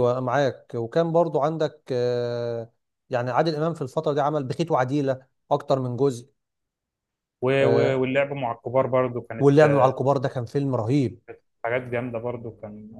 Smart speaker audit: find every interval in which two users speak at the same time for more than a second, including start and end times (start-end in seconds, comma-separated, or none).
none